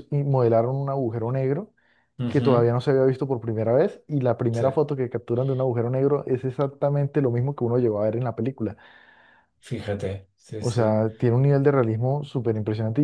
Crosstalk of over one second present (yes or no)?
no